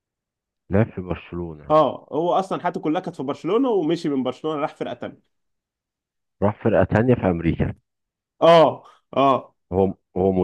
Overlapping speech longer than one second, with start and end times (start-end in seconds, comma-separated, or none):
none